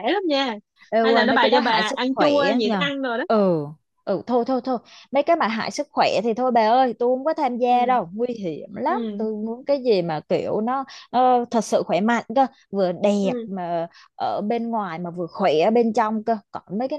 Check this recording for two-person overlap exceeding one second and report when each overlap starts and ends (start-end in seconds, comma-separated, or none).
1.0-2.8